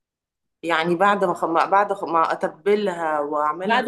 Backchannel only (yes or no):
no